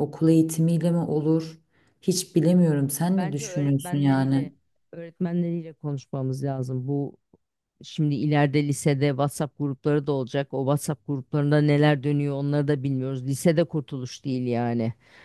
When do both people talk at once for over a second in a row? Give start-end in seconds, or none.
3.2-4.5